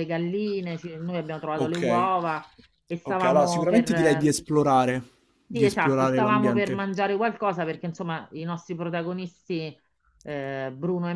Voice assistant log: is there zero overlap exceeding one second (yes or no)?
no